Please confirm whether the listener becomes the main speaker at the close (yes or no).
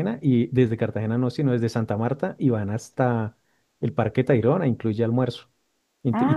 no